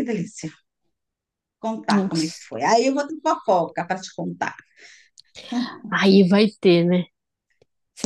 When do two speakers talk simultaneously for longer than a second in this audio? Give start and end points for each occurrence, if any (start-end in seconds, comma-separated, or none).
none